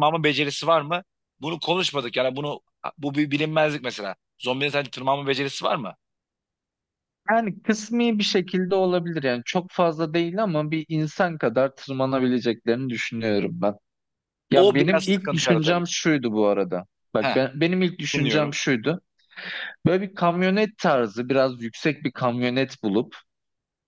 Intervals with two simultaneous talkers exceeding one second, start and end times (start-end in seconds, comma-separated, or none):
14.5-15.8